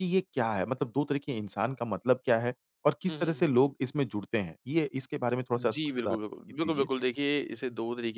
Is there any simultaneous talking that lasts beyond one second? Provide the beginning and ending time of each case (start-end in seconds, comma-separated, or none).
5.5-6.9